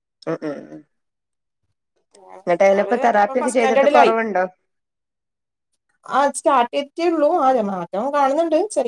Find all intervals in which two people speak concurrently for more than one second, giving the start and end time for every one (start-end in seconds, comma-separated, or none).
2.5-4.1